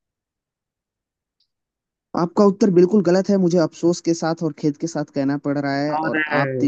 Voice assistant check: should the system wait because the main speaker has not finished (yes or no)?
yes